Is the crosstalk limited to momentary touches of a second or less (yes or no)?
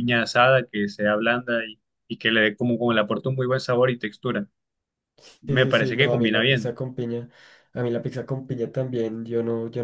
no